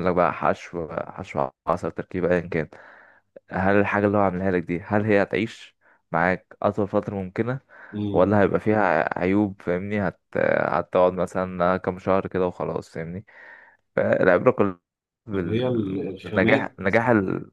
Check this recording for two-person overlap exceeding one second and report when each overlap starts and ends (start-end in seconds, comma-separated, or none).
15.3-16.8